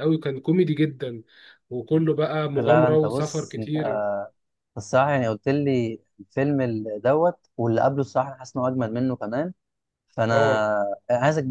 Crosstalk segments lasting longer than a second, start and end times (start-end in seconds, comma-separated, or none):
2.6-3.8